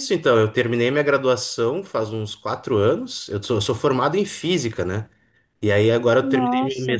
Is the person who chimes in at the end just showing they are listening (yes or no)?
yes